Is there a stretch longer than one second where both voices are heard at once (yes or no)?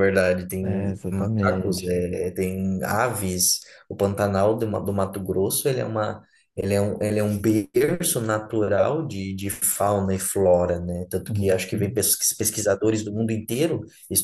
yes